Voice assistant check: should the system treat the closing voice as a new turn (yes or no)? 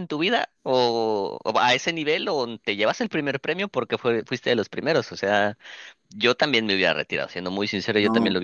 no